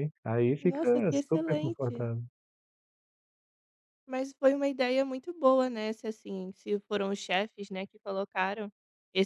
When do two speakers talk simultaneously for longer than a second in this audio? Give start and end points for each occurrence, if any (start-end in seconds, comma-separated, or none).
0.6-2.1